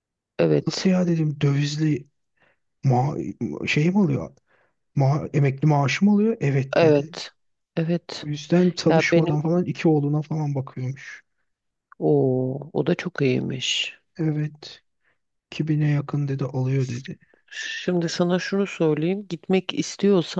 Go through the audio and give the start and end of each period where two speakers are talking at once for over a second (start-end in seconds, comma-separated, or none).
none